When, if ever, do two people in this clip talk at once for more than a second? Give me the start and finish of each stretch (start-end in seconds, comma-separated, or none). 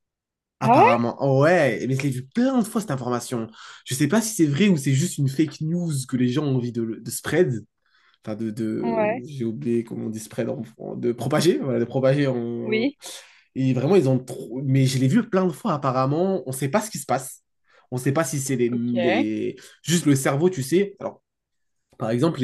none